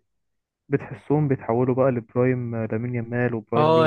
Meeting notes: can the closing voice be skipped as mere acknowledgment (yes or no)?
no